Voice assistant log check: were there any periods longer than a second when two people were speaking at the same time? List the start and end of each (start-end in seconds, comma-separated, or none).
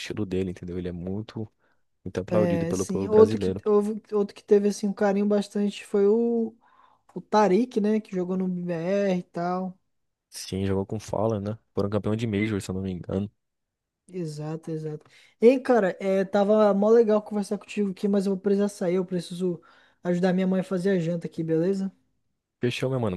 2.3-3.6